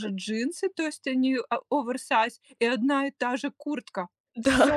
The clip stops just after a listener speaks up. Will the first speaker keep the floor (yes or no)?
yes